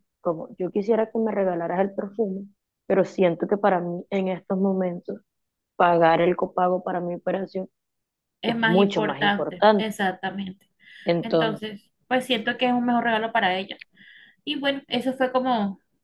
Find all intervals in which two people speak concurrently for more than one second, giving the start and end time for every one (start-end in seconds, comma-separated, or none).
8.4-9.9